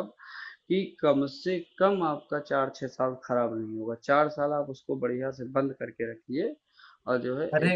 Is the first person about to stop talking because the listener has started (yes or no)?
yes